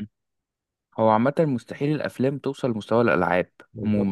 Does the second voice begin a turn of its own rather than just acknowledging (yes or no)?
no